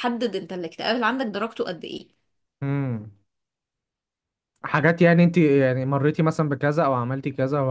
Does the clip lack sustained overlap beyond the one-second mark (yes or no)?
yes